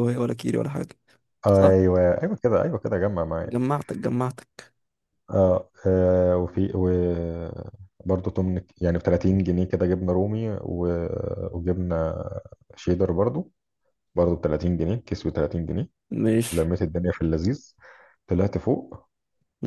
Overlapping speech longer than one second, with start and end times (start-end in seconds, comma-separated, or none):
none